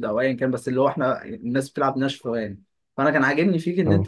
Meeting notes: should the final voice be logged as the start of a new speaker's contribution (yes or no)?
no